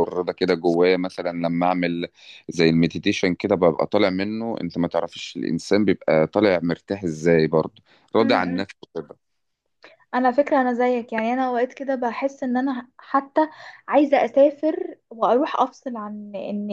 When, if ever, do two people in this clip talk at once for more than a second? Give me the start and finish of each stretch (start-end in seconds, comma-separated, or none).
none